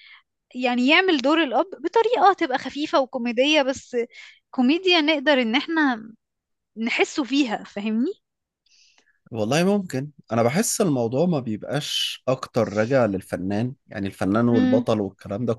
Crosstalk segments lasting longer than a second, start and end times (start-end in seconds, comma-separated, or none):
none